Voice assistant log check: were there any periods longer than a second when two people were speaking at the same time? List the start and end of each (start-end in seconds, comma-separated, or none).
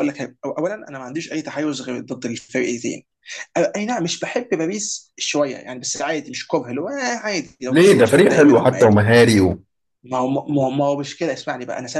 7.7-9.0